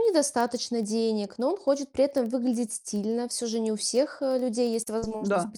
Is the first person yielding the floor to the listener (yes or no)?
no